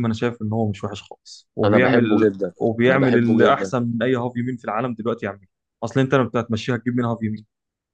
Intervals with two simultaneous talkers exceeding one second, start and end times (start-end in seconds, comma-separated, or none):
1.6-3.8